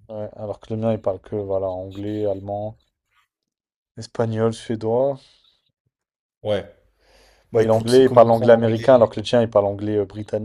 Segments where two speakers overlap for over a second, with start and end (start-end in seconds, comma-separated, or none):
7.6-8.9